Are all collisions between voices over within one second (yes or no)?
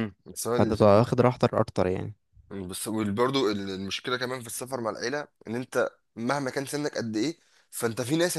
yes